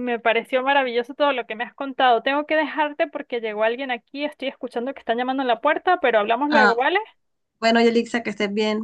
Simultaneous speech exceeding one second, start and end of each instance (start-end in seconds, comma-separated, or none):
none